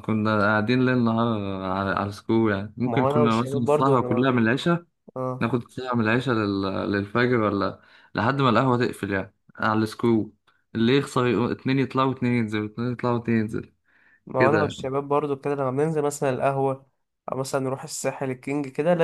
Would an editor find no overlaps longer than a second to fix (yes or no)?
no